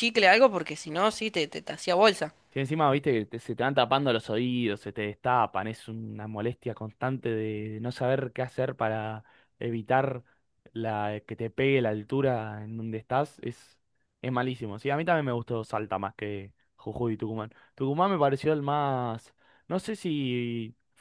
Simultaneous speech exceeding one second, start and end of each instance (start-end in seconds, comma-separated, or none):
none